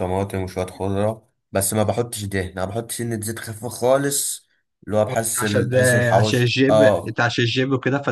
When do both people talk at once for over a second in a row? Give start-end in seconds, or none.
5.4-7.2